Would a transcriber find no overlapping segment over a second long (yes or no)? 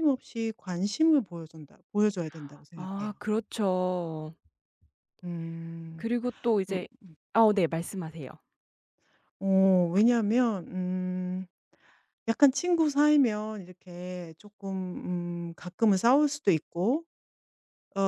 yes